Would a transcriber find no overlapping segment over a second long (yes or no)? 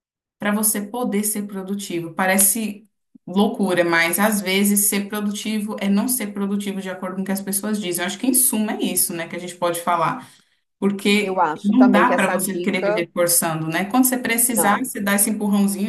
no